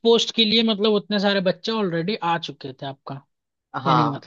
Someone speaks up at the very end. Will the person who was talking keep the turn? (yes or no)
no